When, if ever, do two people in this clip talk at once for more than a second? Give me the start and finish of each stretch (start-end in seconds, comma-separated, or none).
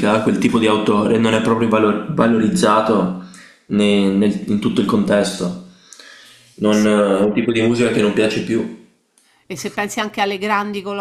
none